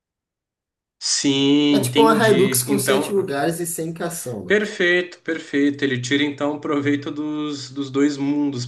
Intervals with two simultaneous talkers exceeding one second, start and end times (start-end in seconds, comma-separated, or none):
1.7-3.1